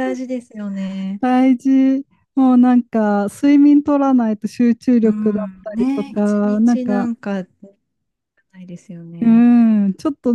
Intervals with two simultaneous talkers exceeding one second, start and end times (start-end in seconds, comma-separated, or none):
5.0-7.1